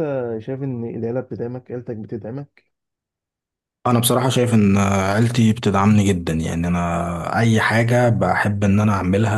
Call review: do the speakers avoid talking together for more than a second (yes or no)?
yes